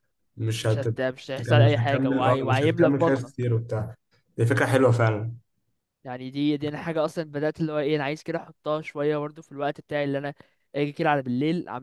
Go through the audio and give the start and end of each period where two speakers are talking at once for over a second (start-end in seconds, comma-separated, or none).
0.6-3.3